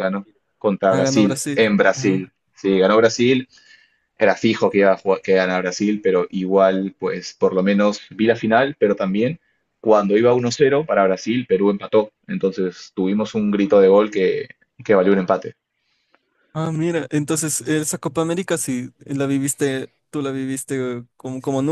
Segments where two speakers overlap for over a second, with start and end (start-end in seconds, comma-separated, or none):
0.9-2.2